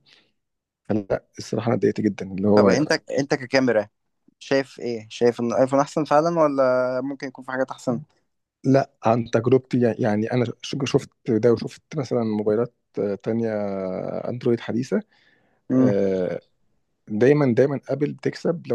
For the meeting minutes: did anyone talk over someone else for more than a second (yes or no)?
no